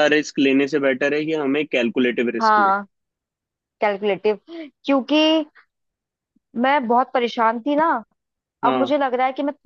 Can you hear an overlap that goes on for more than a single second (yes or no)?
no